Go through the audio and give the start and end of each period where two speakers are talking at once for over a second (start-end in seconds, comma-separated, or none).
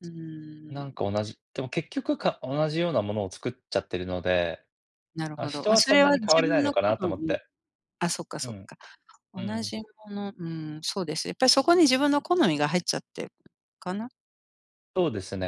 5.4-7.4